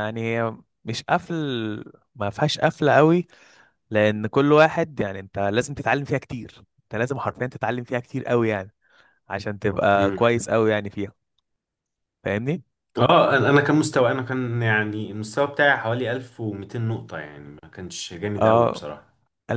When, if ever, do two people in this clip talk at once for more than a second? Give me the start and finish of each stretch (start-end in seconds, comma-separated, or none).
none